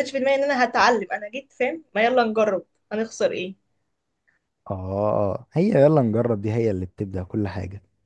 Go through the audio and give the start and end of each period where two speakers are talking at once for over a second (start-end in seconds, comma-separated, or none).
none